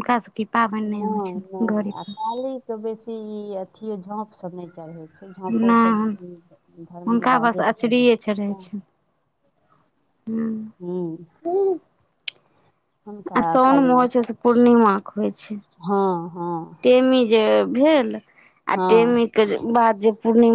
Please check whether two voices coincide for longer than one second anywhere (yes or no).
yes